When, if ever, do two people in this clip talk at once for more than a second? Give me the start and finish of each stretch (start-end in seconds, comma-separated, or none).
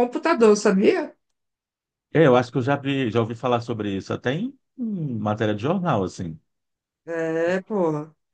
none